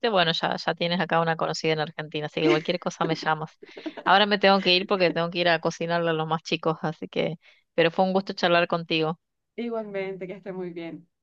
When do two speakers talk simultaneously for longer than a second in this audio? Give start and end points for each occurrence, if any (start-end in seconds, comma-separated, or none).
none